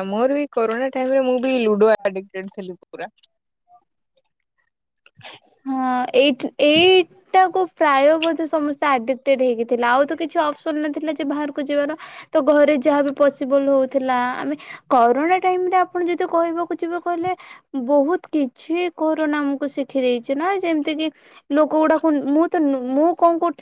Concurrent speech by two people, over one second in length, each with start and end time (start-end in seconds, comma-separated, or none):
none